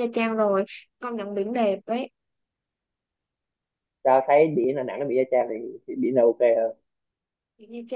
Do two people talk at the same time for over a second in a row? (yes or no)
no